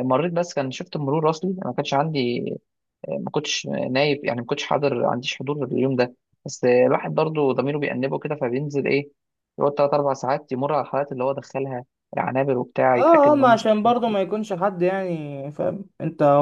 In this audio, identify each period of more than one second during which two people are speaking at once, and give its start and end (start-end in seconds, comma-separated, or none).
12.9-14.2